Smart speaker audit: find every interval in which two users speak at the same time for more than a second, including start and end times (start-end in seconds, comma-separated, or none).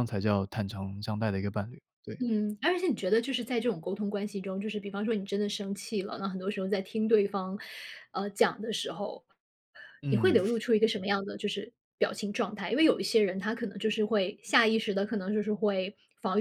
none